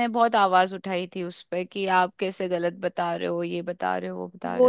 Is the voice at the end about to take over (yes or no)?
yes